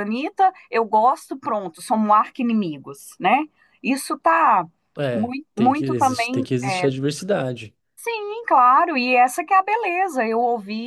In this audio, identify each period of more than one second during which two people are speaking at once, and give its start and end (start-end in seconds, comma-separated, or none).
5.1-6.9